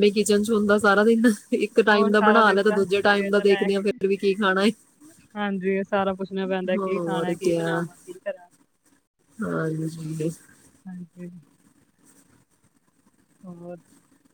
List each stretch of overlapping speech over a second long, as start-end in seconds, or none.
1.9-4.0